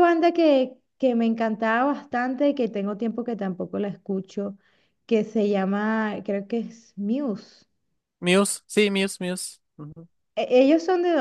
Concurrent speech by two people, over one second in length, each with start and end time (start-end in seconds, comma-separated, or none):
none